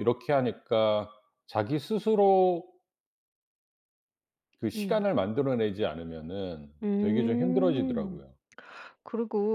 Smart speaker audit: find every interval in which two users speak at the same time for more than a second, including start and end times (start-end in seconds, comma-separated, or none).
6.8-8.2